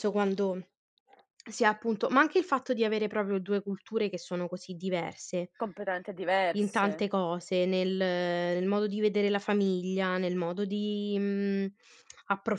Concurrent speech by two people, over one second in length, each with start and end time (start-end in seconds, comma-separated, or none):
none